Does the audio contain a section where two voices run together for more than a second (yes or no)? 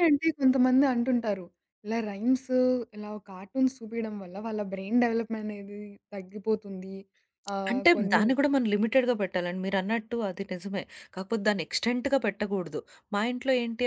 no